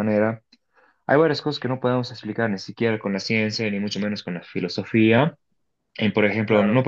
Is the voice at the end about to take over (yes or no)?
no